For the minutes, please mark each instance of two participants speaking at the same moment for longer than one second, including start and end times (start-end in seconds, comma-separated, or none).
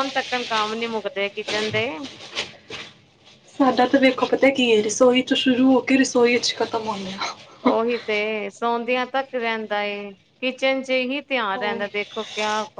none